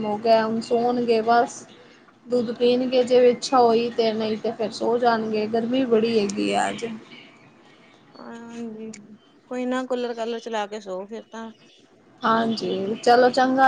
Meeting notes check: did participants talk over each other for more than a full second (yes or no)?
no